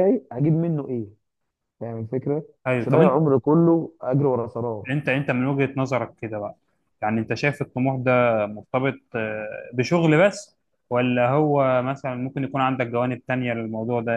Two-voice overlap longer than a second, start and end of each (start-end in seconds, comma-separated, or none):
none